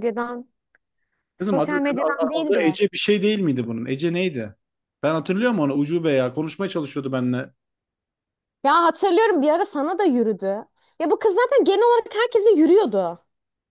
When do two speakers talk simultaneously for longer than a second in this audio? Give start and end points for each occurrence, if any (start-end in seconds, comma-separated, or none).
1.4-2.8